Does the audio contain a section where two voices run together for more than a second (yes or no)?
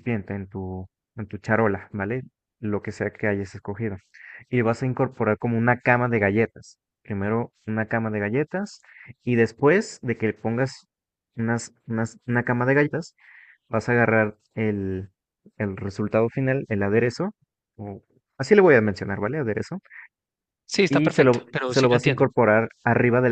yes